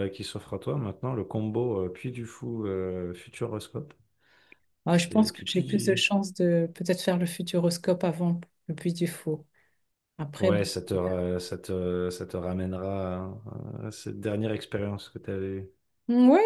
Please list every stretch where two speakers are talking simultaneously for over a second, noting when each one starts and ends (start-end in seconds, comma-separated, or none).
4.9-6.1